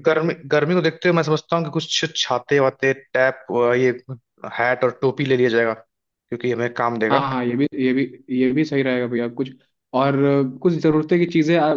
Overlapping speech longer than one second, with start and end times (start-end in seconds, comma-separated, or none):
none